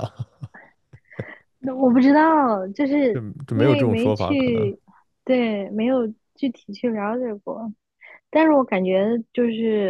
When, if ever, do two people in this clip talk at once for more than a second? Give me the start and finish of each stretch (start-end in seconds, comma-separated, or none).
3.1-4.7